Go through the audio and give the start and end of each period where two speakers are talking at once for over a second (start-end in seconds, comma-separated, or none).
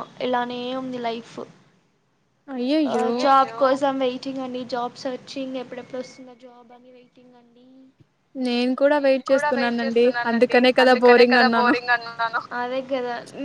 9.0-11.7